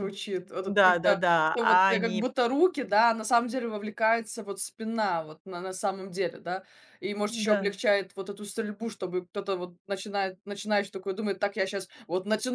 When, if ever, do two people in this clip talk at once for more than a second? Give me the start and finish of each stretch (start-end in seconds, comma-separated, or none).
0.6-2.3